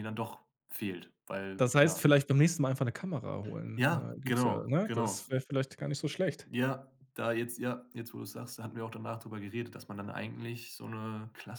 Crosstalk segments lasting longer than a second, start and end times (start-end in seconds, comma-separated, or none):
3.8-5.2